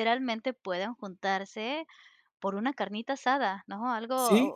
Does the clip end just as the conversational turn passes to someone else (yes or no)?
no